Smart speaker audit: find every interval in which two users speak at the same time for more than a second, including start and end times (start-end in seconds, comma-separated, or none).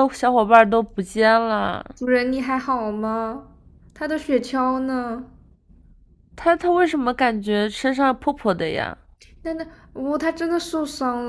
none